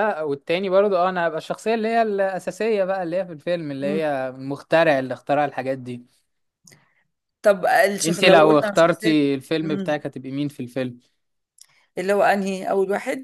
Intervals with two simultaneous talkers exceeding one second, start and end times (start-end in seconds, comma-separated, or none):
8.1-10.0